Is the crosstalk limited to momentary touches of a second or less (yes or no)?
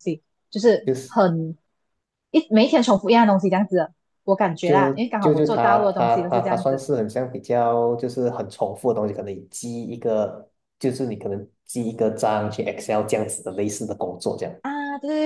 no